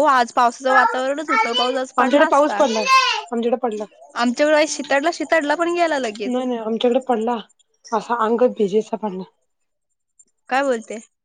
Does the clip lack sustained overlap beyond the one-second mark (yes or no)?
no